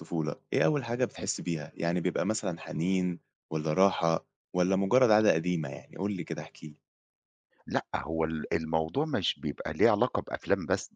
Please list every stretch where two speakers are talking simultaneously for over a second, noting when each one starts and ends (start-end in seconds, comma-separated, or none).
none